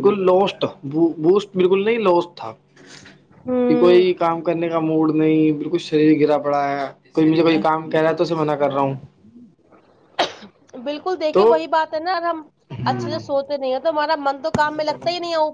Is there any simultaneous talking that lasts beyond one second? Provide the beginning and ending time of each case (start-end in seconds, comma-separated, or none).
none